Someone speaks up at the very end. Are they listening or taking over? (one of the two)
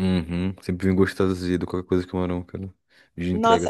taking over